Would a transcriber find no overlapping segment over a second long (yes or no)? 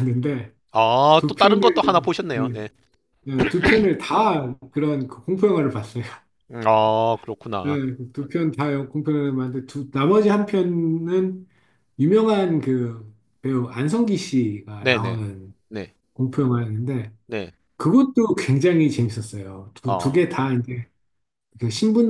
no